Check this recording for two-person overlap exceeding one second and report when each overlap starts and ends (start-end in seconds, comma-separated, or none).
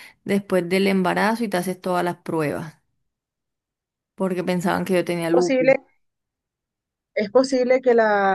none